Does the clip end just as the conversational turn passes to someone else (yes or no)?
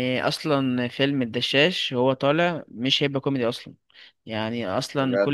no